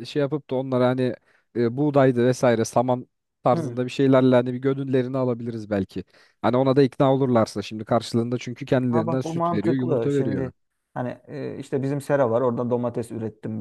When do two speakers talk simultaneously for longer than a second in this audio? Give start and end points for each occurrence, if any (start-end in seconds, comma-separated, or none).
8.9-10.5